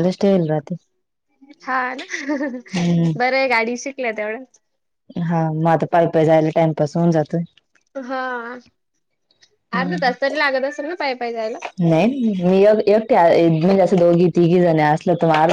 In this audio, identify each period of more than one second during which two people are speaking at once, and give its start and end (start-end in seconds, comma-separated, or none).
none